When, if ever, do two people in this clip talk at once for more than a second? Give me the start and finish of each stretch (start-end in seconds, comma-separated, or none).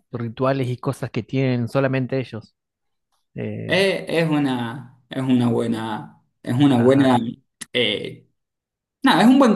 none